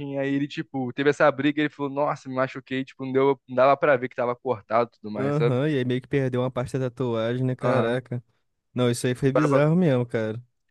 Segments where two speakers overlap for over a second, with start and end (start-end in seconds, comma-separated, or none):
none